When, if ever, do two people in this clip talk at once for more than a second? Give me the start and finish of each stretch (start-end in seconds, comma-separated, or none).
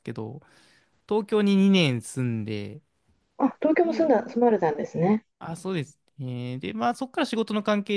none